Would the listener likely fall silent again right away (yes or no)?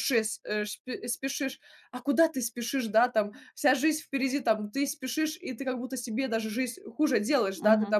yes